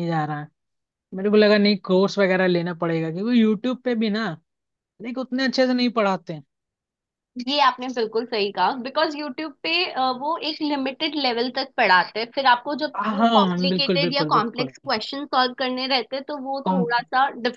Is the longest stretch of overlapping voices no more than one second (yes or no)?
no